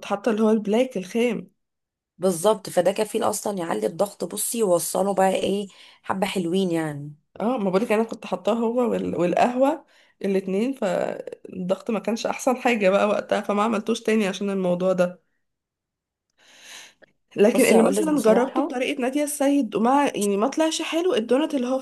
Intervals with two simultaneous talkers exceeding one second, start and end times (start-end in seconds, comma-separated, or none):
17.5-18.8